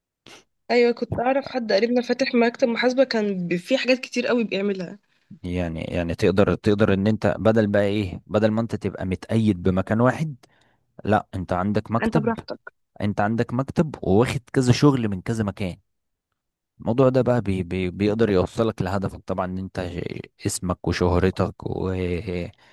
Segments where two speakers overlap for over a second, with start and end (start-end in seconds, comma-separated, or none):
none